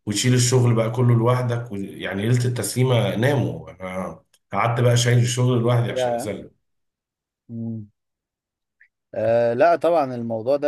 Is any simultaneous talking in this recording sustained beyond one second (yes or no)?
no